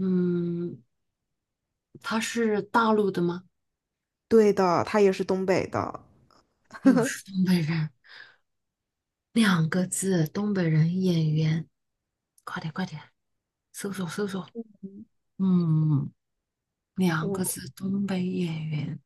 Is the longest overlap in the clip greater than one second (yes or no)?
no